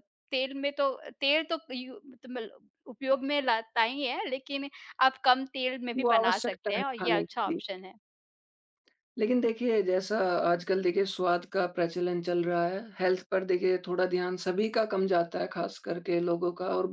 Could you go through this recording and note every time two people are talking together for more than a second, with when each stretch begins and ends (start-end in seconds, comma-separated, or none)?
6.0-7.6